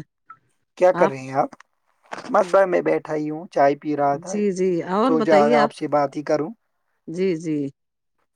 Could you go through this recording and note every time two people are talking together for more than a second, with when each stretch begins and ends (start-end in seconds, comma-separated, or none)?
none